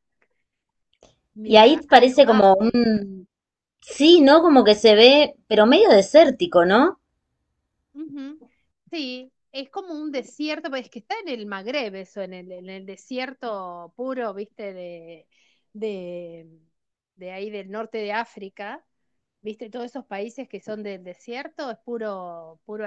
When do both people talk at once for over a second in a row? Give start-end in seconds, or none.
1.4-2.8